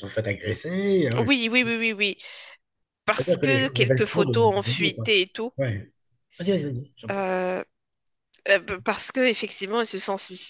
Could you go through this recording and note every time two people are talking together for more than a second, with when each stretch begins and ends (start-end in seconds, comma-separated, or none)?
3.1-5.1